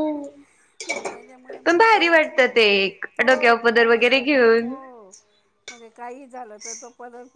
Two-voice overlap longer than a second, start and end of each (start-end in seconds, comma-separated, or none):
3.2-4.7